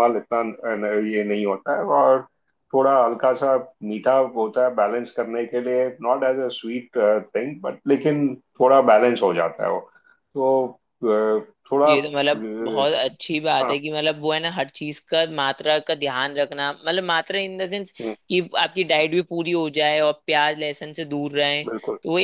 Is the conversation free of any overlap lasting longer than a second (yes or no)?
yes